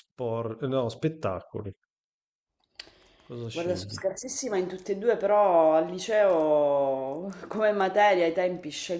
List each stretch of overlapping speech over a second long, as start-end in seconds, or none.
none